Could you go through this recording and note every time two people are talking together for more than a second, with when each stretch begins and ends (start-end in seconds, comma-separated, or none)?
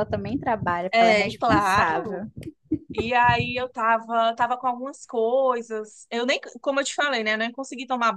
0.9-2.2